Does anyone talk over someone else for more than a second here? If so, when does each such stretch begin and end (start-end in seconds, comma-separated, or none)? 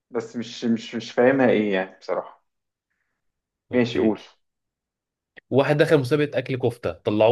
none